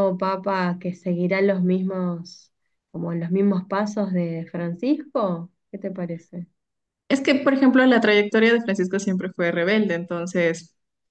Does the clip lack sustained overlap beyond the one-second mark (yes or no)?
yes